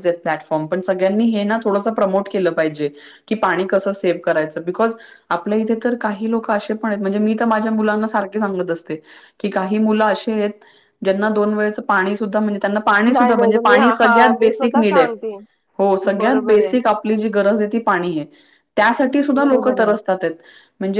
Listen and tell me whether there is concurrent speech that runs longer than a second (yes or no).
yes